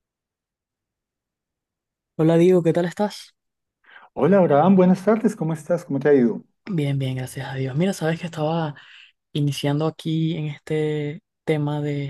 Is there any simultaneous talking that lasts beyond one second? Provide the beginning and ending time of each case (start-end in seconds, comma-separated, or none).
none